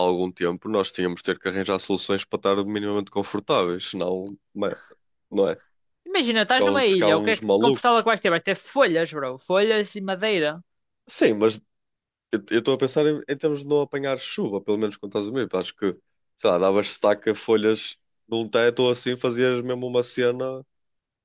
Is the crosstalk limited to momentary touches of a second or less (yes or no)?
no